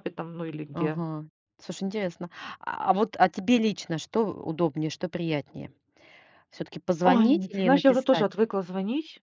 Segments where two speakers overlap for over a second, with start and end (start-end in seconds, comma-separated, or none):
7.0-8.4